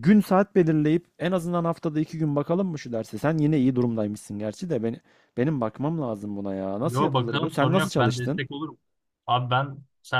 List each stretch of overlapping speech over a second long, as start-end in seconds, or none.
6.8-8.4